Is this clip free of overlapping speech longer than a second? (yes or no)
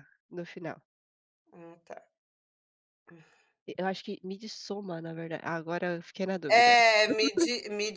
yes